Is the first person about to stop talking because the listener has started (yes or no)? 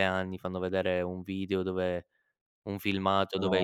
no